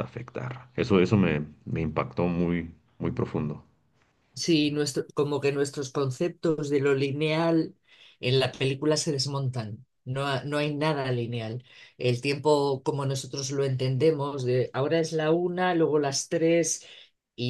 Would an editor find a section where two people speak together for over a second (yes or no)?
no